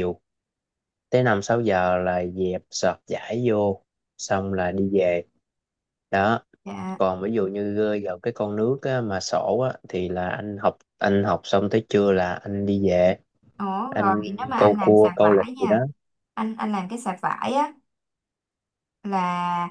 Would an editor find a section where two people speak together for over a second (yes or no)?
yes